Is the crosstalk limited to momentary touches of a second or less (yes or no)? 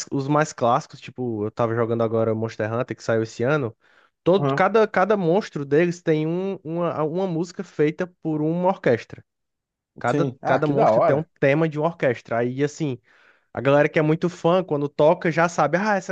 no